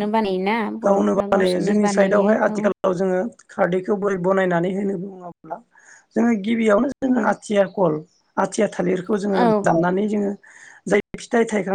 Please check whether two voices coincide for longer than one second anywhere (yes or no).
yes